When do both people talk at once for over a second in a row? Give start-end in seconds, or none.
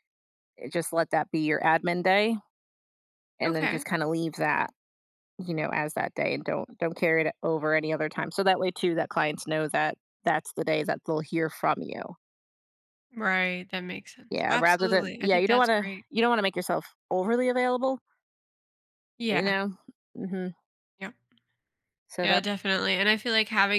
14.3-16.1